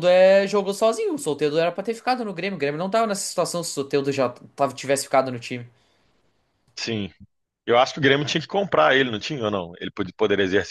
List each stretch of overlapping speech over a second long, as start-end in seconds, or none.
none